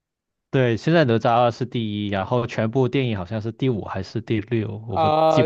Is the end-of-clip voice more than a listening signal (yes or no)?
yes